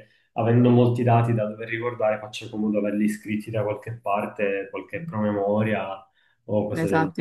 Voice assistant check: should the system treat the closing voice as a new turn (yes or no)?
yes